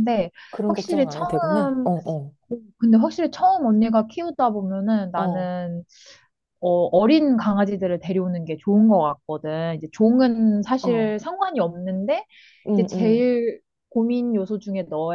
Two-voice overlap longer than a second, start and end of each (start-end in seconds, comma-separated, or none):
0.7-1.9